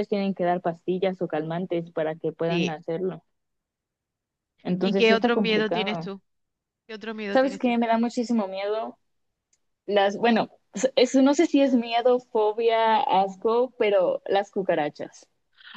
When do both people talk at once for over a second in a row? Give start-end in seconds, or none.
4.8-6.1